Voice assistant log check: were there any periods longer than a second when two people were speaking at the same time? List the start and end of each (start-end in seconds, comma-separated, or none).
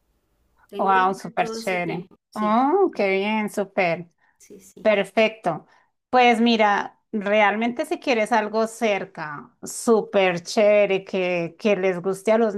0.8-2.6